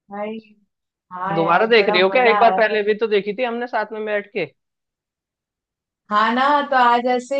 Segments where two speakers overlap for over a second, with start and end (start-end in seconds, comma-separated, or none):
1.4-2.9